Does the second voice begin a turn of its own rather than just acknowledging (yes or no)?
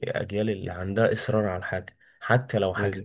no